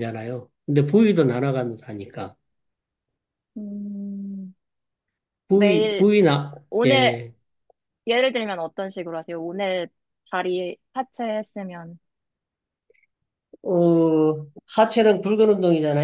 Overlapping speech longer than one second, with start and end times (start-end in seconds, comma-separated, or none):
none